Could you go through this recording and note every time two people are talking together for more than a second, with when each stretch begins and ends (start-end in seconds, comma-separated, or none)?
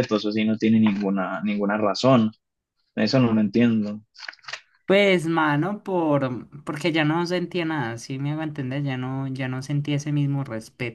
none